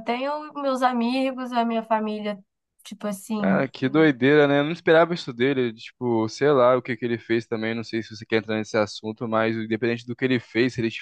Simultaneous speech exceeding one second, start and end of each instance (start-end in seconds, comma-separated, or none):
none